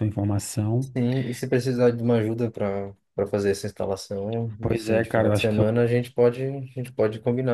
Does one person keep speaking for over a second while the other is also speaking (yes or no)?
yes